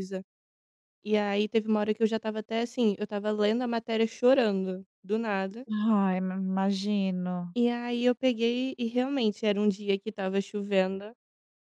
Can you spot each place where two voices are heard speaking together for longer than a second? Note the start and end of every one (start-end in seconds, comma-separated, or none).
none